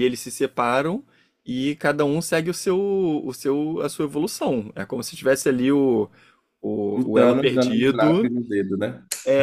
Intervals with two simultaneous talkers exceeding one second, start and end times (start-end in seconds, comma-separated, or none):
6.9-8.3